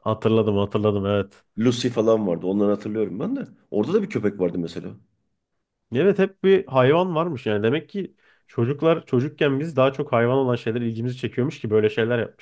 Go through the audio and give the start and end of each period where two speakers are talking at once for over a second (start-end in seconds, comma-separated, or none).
none